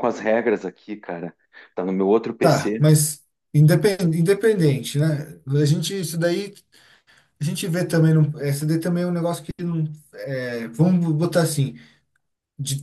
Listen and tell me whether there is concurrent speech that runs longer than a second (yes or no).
no